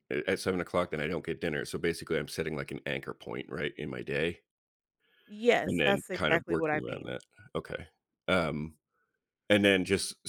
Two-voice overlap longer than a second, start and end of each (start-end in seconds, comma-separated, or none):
5.7-7.1